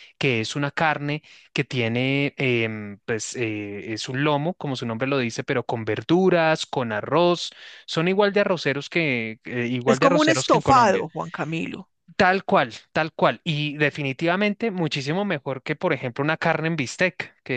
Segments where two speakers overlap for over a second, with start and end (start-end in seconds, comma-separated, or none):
9.9-11.1